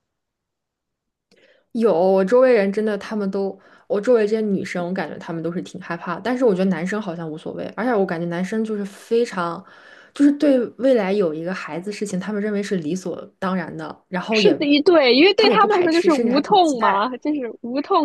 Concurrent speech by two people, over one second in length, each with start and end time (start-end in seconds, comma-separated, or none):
15.3-17.1